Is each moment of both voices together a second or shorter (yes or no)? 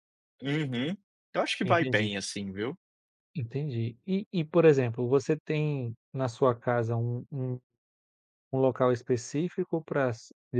yes